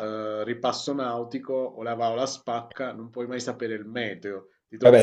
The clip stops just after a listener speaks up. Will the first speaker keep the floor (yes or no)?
no